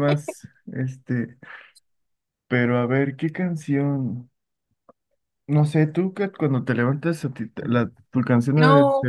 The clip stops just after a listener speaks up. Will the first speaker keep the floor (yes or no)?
no